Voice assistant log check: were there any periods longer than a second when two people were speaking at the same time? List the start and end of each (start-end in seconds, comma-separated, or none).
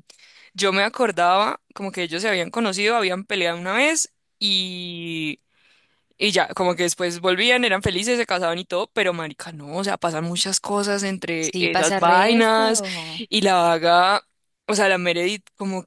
11.4-13.2